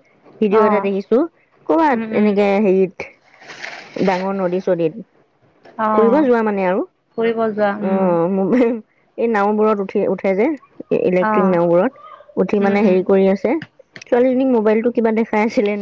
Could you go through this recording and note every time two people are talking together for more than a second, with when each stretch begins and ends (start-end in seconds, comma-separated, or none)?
none